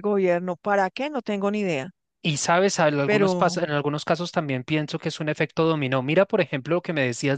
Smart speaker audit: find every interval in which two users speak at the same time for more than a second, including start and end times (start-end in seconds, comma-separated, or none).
none